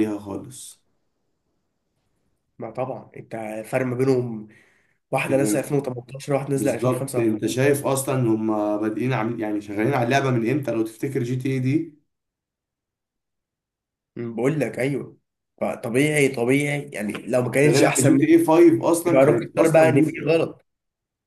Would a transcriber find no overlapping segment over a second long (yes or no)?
no